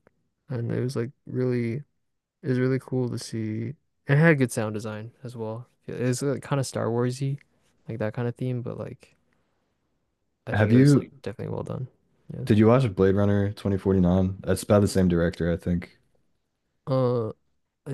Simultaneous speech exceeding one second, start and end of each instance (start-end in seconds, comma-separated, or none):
none